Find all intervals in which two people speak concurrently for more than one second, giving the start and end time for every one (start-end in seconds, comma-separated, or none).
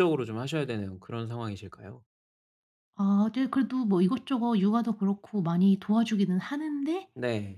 none